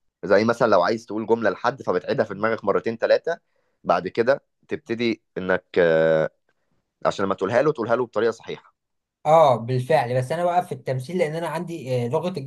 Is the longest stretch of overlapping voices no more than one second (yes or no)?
yes